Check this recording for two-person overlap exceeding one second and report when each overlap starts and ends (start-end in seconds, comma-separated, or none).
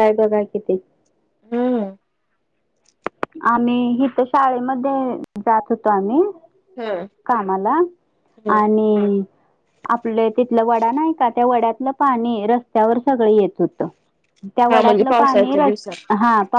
14.8-16.1